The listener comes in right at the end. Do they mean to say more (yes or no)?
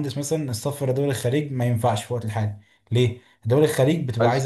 no